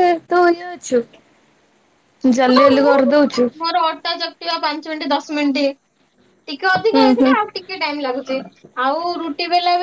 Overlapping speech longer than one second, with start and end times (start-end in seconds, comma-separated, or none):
none